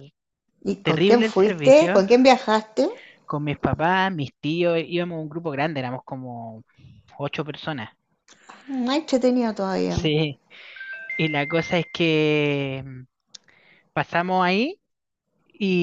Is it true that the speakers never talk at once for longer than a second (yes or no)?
no